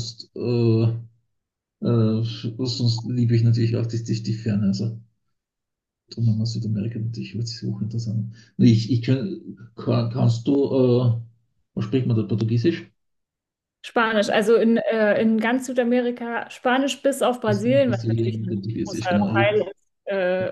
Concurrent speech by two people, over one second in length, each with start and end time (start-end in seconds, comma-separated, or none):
17.5-19.7